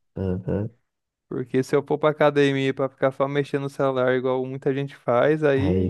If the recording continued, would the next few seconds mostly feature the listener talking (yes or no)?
yes